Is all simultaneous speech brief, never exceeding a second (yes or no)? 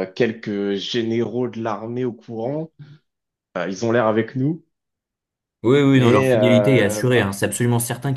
no